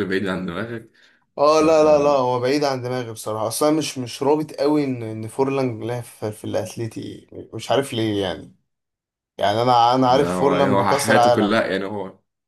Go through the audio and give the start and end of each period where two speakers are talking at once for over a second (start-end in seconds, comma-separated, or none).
10.1-11.6